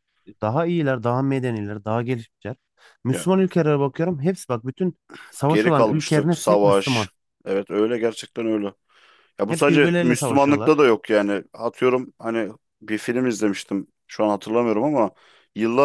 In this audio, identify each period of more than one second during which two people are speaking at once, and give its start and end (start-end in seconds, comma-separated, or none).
5.5-7.1, 9.5-10.7